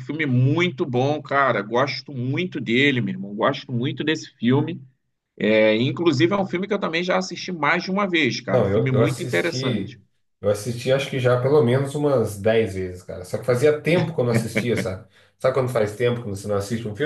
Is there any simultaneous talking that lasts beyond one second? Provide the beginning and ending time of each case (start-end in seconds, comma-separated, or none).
8.5-10.0